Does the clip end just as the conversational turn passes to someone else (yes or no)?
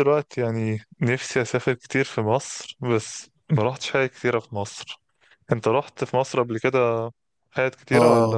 yes